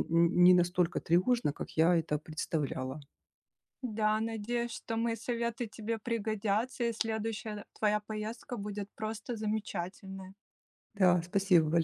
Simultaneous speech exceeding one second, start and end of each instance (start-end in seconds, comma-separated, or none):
none